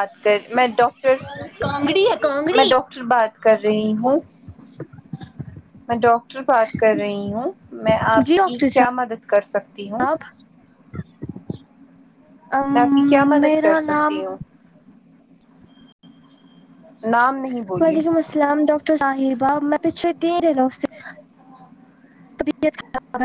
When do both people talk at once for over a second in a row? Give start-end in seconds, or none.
12.7-14.2